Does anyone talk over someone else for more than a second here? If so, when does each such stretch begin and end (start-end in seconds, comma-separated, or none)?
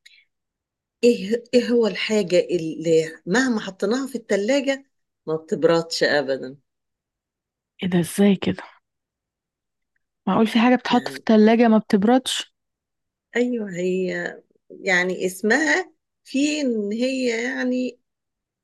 none